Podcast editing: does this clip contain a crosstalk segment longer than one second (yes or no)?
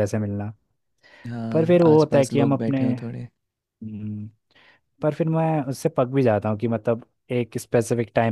yes